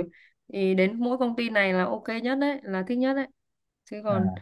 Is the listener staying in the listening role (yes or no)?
yes